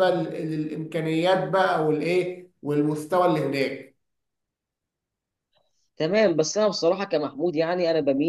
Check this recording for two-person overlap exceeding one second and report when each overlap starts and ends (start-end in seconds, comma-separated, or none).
none